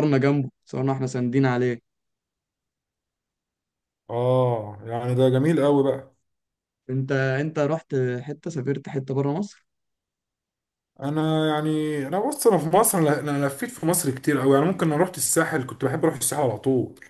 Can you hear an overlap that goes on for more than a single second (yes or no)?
no